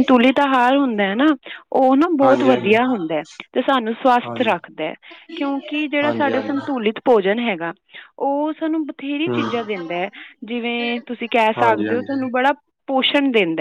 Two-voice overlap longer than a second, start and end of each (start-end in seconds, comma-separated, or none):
none